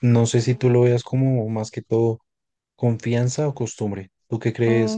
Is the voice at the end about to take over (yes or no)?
yes